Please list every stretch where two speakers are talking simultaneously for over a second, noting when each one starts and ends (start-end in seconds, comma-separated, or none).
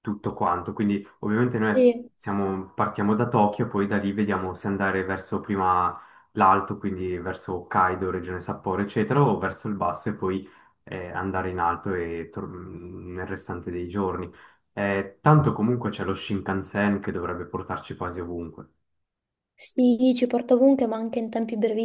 none